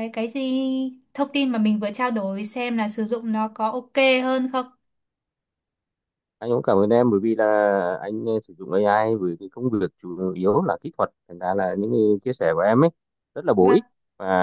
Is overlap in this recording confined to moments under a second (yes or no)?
yes